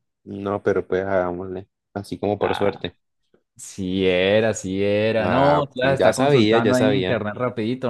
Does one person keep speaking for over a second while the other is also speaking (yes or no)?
yes